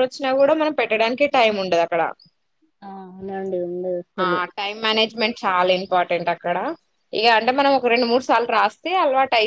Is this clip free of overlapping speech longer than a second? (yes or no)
yes